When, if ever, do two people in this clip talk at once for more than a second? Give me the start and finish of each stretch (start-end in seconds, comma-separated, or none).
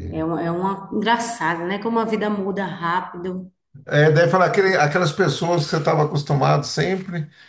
none